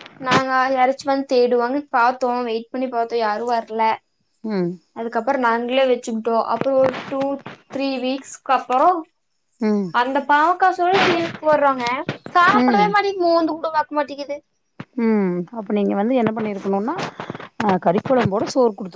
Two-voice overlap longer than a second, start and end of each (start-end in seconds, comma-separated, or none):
none